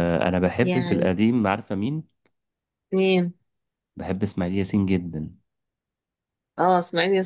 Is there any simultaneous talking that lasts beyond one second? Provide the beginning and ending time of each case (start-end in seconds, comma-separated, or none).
none